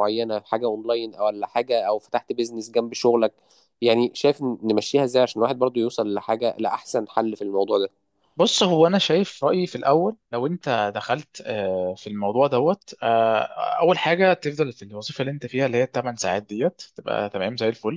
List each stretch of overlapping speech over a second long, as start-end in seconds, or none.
none